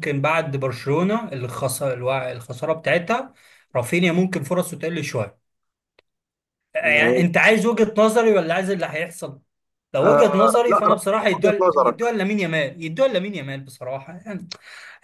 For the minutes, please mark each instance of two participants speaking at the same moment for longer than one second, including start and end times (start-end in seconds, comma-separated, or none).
10.0-12.0